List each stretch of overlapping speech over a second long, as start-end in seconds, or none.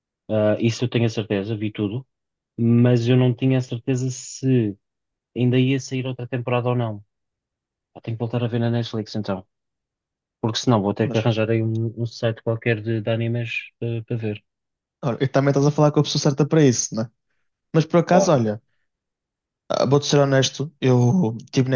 none